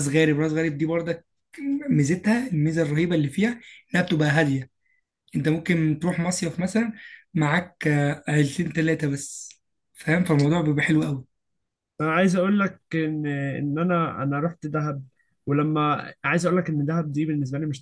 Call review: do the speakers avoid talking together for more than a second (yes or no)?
yes